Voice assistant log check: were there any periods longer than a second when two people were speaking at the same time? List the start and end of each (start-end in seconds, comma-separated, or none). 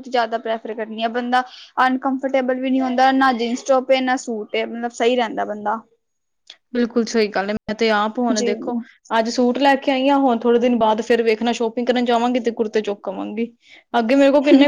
none